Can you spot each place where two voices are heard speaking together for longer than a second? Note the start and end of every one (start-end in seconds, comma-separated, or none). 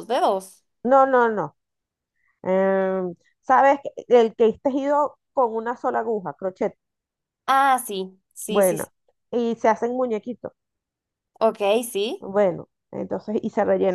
none